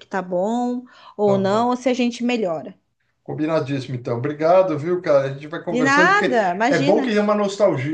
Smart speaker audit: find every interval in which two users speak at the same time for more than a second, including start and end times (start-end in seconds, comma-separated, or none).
5.7-7.1